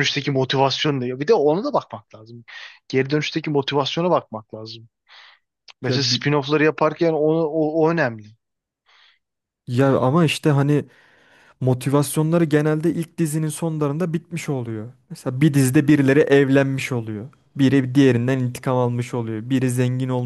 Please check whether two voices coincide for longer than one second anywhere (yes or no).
no